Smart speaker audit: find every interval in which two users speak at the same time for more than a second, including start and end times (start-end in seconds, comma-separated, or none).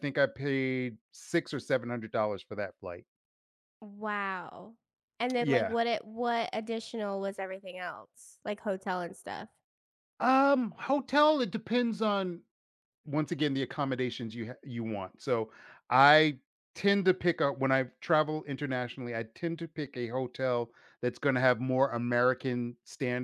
none